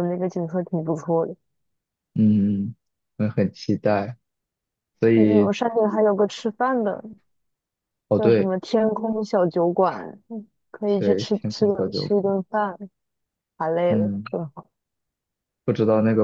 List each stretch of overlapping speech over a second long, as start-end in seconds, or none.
11.0-12.3